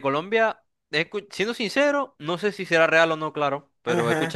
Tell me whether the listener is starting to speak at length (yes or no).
no